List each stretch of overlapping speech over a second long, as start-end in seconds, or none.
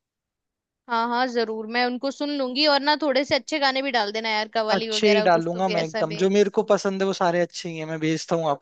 4.7-6.2